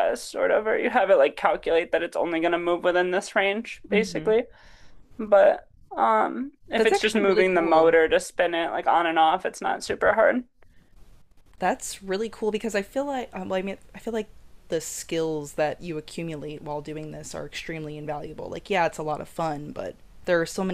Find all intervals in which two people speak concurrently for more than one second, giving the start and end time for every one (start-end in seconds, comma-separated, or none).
6.8-8.0